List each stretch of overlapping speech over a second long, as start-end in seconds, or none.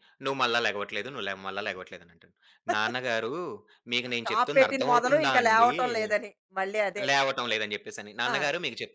4.2-5.7